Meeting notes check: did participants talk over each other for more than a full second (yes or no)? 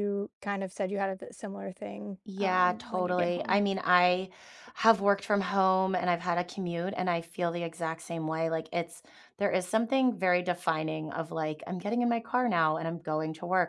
yes